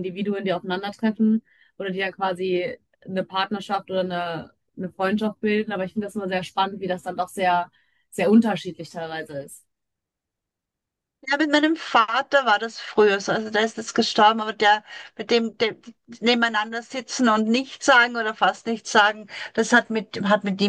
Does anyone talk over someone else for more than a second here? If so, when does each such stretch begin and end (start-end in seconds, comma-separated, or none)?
none